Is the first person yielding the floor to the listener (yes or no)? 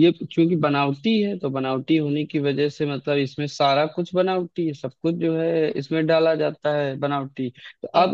no